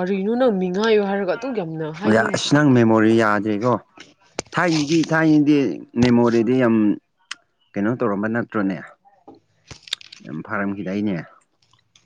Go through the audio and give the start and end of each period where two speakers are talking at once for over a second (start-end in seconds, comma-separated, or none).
none